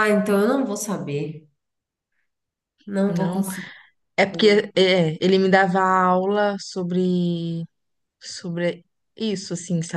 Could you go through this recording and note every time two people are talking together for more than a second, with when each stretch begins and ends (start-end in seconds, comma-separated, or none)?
none